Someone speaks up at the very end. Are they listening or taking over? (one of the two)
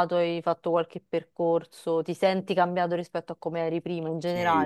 taking over